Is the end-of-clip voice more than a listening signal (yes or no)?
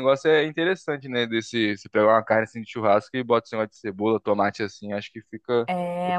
yes